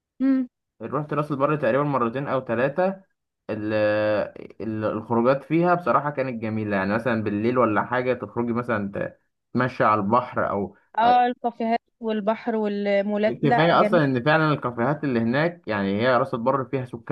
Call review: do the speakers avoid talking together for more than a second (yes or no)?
yes